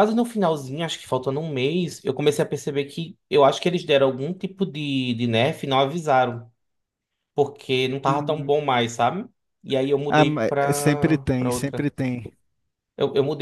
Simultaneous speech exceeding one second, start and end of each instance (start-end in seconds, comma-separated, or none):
10.1-11.9